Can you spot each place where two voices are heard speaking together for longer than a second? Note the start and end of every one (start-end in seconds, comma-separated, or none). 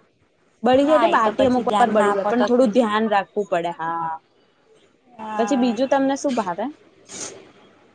0.8-3.0